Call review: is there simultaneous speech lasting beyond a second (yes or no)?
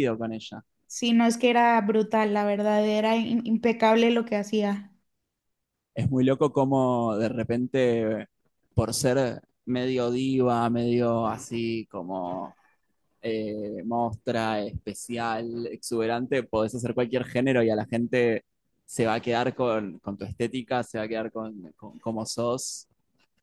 no